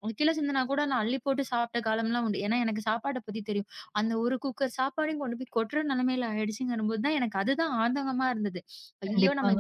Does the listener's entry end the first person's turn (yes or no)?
yes